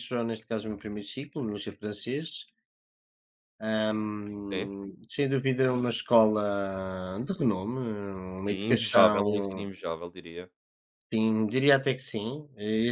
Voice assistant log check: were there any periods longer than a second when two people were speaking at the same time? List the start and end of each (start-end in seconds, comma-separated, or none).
8.4-9.7